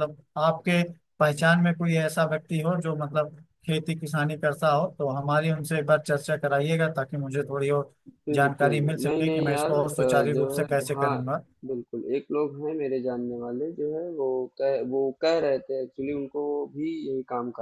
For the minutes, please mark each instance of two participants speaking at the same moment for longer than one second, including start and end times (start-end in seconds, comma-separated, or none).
8.3-11.2